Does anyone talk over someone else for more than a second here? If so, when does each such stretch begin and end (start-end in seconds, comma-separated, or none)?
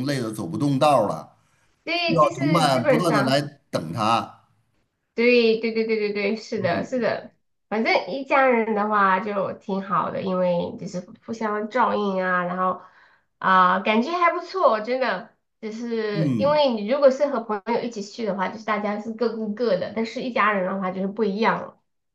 2.0-3.4